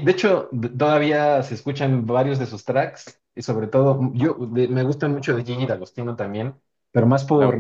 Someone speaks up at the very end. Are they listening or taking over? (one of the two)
taking over